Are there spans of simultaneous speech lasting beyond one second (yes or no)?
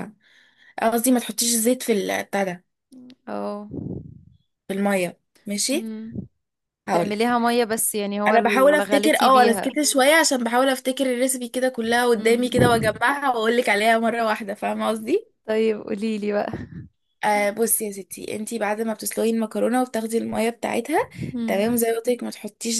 yes